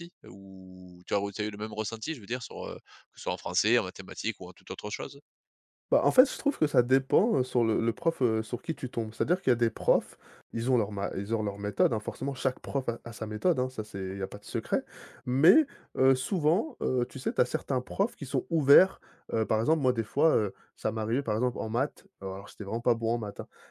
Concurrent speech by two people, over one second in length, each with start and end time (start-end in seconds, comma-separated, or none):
none